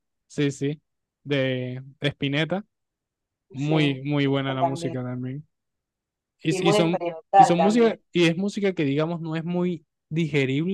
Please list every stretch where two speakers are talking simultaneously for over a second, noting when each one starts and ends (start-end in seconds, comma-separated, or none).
3.6-5.0, 6.5-8.0